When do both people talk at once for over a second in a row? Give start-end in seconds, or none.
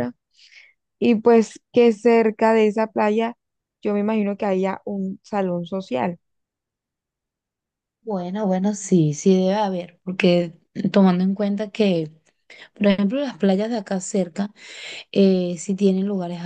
none